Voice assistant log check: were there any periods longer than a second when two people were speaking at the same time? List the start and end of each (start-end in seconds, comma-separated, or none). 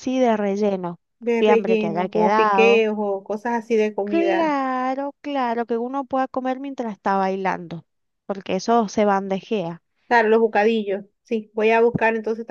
1.4-2.9